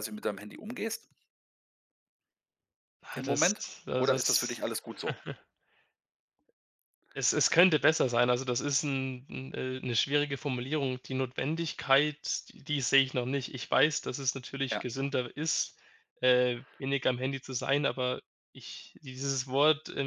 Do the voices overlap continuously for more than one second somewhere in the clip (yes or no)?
yes